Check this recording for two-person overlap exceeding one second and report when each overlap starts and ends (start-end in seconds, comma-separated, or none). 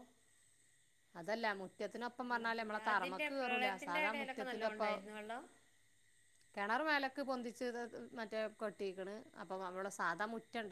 2.3-4.9